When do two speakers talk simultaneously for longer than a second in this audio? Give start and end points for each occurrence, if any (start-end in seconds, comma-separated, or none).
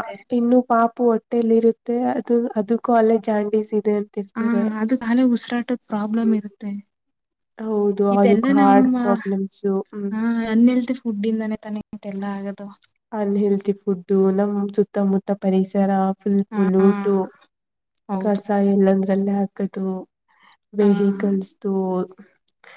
8.2-10.1